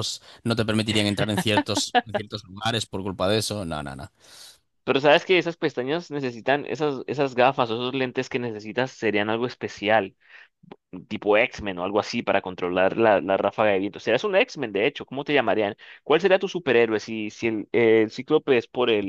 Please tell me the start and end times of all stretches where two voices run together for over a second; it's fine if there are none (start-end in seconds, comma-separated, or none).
none